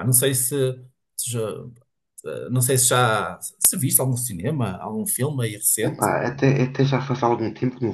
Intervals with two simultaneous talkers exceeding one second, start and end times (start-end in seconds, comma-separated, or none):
none